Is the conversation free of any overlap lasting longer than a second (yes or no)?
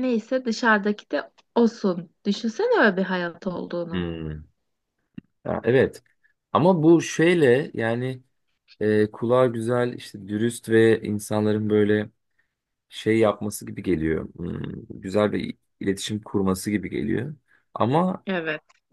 yes